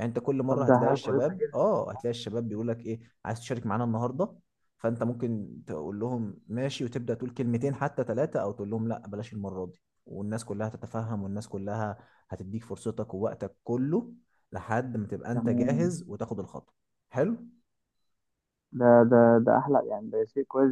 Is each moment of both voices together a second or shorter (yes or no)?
no